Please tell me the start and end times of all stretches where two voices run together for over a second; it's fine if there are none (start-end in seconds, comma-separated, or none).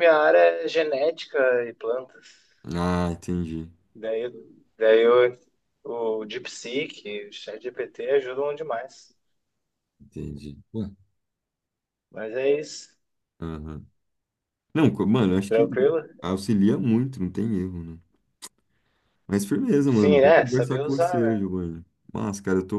19.9-21.4